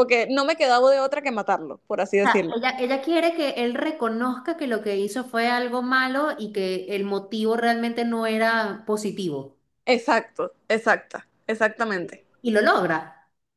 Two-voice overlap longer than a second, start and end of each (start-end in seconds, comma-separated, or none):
none